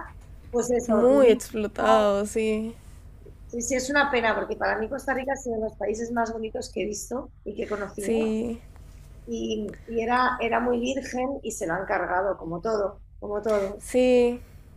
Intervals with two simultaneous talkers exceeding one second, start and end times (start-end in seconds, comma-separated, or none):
0.9-2.1